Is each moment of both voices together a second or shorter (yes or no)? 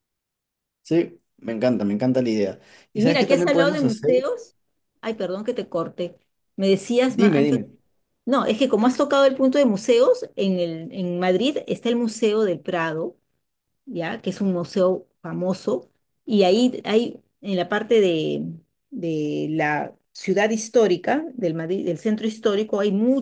no